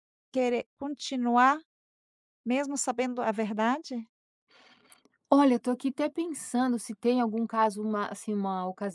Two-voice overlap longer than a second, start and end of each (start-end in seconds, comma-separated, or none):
none